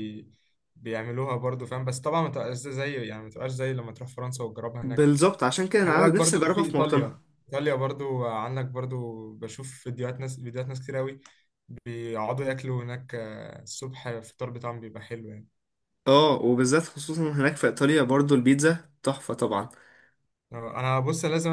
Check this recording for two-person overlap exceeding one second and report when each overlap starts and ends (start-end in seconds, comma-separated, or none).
5.8-7.2